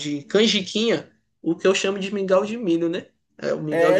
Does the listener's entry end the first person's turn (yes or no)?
yes